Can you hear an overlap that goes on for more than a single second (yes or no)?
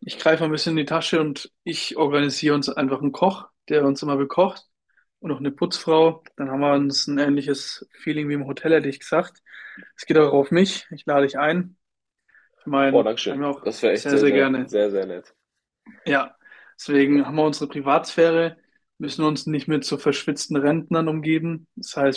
yes